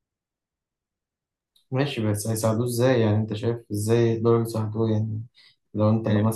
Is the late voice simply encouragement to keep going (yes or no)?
yes